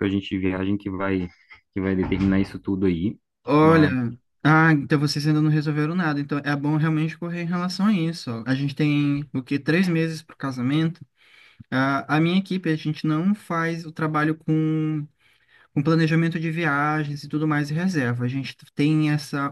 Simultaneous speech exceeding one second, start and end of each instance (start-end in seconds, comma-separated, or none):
none